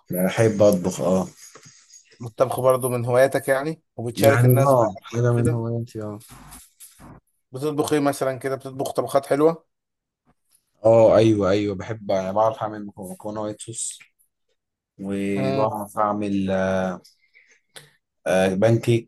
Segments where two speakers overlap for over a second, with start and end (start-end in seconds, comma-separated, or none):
4.2-5.7